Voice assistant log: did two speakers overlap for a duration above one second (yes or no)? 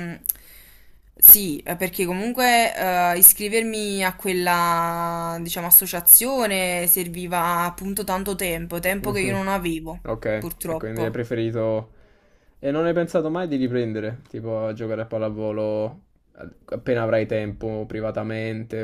no